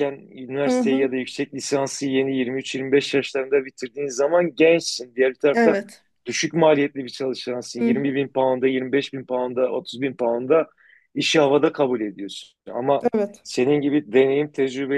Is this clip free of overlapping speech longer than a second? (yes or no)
yes